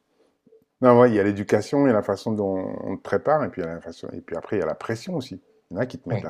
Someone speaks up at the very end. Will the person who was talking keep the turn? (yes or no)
yes